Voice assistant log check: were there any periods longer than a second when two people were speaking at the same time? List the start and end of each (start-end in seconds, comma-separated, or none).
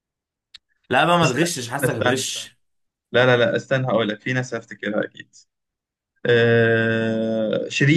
1.2-2.6